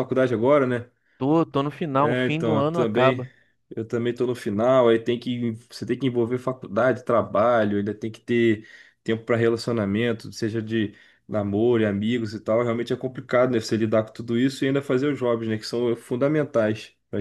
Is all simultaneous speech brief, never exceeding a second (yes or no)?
no